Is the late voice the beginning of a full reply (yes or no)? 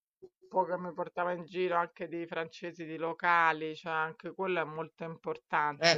no